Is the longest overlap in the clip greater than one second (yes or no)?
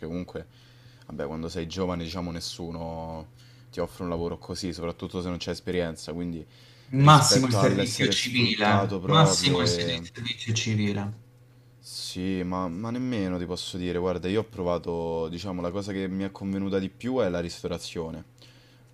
yes